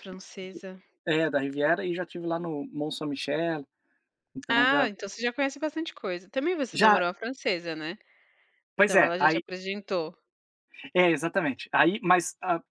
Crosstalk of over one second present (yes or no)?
no